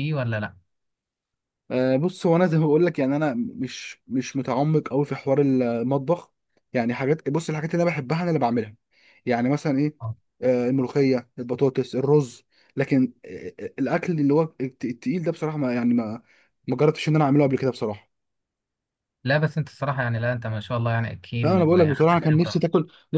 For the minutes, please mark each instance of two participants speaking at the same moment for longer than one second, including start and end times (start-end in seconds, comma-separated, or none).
21.4-22.6